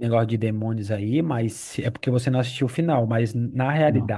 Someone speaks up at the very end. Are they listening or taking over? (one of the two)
listening